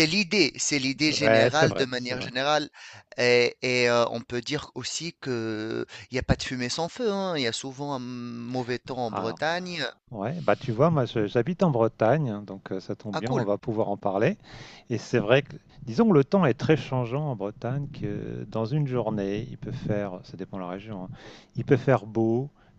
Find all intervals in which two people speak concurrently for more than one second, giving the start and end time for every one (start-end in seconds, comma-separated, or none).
1.1-2.3